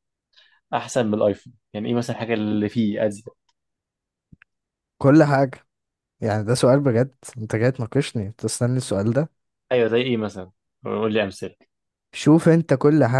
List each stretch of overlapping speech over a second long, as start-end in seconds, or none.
none